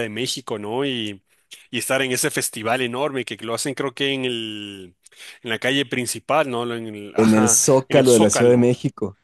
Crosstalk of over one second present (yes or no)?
yes